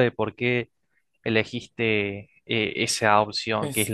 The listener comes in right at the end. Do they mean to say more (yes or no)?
no